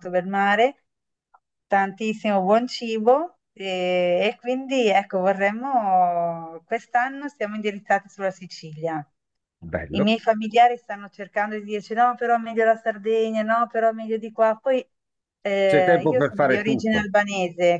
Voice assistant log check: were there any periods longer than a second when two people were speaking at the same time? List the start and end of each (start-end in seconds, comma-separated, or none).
15.7-17.1